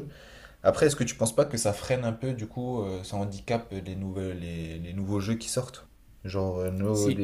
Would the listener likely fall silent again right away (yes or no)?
yes